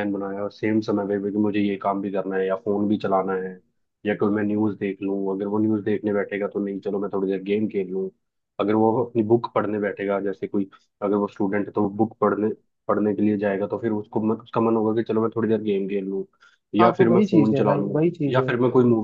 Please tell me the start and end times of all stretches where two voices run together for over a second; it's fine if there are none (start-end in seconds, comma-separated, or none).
16.8-18.5